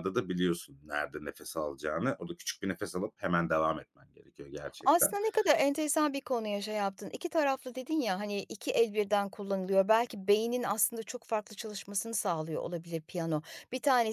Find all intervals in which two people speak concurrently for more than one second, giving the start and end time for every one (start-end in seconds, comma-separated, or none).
none